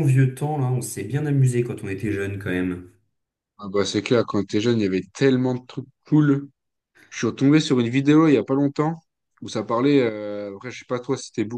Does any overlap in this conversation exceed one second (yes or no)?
no